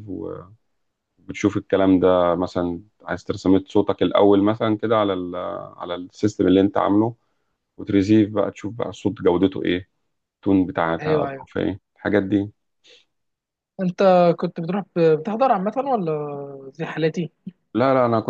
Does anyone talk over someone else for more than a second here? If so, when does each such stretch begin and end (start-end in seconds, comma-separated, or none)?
none